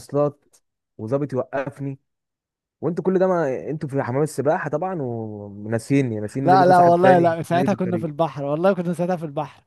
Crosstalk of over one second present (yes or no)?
yes